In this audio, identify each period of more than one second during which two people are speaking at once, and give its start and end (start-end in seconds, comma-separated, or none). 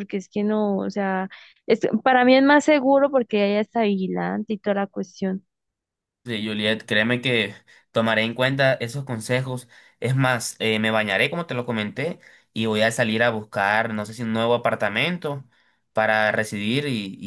none